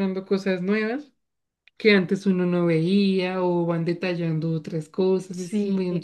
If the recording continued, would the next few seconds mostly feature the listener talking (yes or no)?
yes